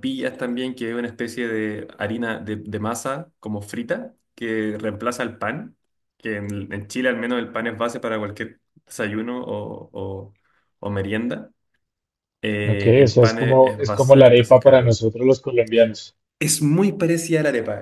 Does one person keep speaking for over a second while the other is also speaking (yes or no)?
yes